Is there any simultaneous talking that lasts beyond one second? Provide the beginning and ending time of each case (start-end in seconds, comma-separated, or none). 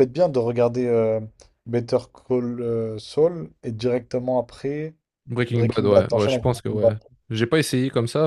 5.5-6.9